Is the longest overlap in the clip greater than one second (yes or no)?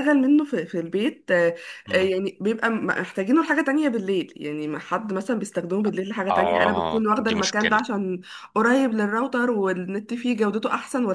yes